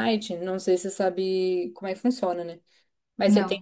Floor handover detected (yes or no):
no